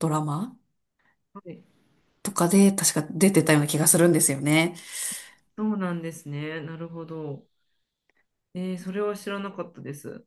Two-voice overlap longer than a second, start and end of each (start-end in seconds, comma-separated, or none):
none